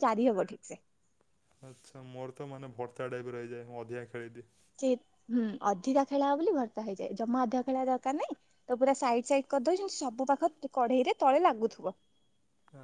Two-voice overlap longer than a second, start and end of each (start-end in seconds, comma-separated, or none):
none